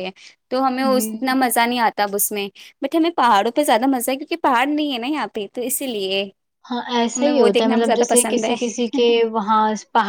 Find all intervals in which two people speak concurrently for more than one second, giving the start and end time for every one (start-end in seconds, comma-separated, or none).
7.2-8.5